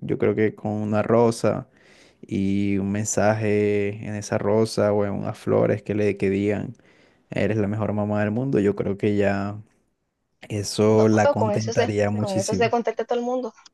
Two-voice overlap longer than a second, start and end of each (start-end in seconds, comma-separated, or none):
10.9-12.7